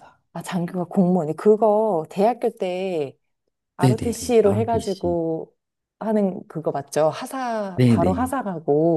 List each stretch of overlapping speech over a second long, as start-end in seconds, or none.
3.8-5.2